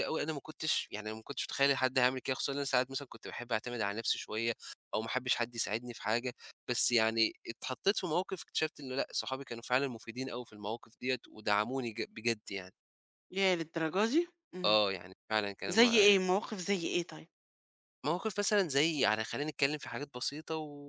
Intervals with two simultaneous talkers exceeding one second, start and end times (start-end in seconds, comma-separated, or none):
none